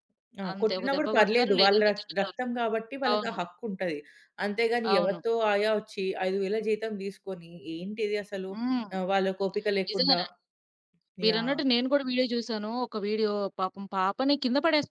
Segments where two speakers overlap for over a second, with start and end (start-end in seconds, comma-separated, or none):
0.5-2.4